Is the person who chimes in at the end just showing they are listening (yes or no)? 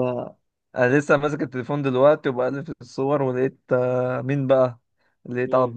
yes